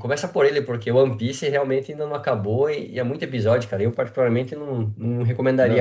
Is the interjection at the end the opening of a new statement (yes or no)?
yes